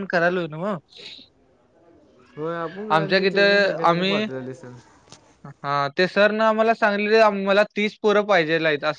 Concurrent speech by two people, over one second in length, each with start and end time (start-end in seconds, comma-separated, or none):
none